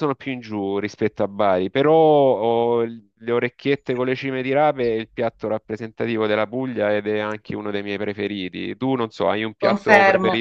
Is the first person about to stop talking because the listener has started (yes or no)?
yes